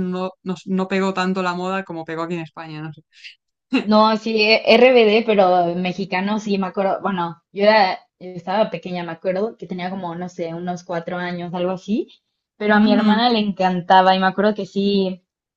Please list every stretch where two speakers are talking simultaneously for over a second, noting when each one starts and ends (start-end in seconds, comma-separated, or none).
none